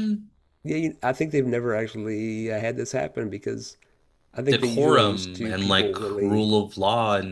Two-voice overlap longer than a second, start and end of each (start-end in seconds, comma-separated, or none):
4.5-6.5